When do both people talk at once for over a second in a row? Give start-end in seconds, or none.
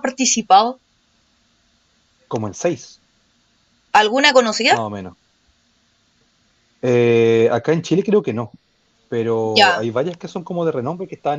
none